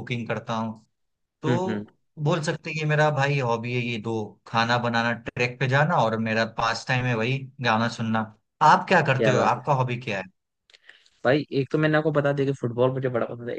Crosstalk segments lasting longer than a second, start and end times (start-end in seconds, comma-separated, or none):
none